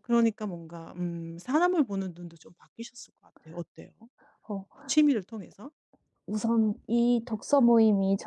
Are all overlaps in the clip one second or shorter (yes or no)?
yes